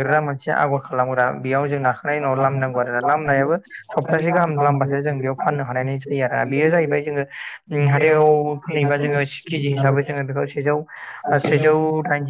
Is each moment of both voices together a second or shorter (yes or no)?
no